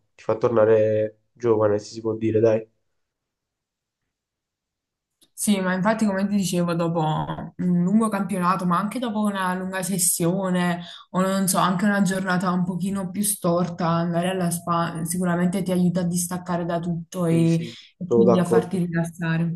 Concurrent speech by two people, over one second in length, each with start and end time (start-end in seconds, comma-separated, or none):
17.3-18.8